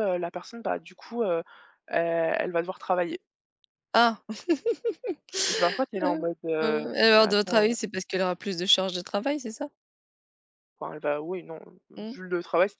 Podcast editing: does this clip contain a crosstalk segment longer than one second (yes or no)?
yes